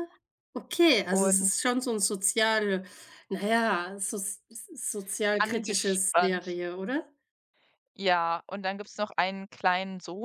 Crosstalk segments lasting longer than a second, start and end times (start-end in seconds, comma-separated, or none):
5.4-6.6